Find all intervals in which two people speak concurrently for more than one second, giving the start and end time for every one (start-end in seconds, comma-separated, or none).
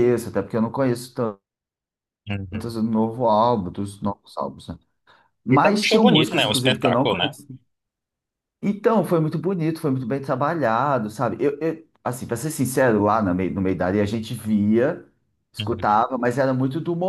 5.5-7.4